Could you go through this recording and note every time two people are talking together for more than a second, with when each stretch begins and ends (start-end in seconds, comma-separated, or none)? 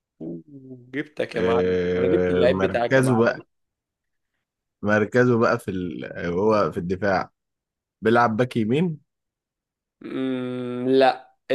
1.3-3.3